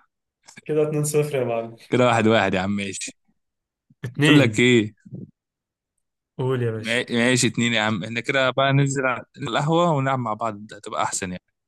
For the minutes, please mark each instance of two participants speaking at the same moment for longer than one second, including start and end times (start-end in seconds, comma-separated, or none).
none